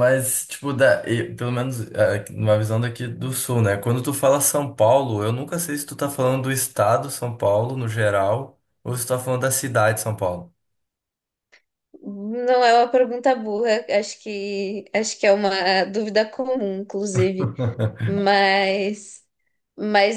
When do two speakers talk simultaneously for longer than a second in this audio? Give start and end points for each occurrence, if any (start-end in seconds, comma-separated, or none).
none